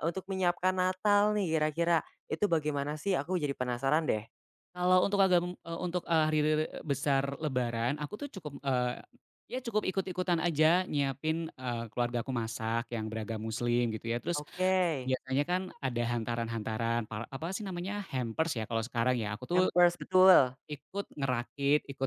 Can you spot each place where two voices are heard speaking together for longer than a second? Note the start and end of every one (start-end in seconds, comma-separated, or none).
none